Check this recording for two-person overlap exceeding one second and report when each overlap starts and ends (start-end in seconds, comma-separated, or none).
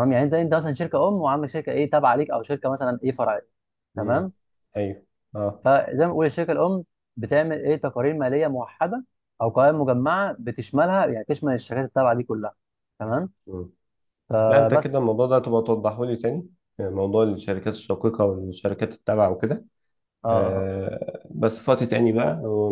none